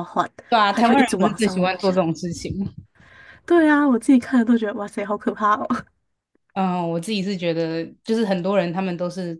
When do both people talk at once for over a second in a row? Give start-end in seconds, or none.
0.7-2.1